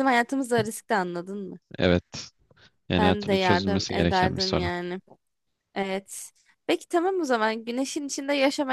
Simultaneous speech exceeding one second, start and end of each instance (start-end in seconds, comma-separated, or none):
3.0-4.7